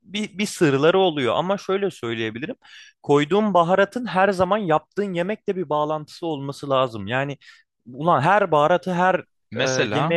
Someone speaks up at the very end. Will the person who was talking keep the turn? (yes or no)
yes